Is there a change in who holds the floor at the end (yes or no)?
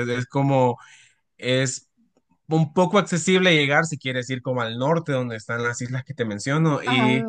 no